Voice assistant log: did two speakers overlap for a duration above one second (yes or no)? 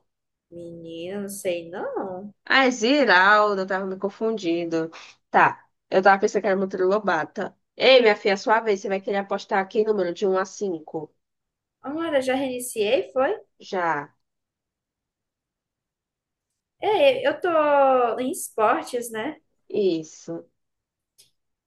no